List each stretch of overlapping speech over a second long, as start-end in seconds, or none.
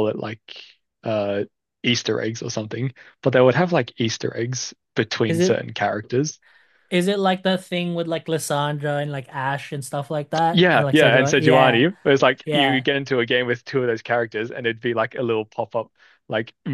10.5-11.8